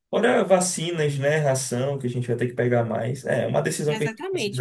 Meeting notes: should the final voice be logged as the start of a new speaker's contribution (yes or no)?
yes